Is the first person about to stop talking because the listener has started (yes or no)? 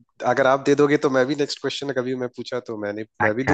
yes